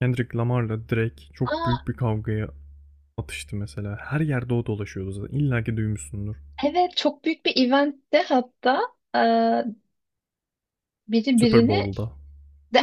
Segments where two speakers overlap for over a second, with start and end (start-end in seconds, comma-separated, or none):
none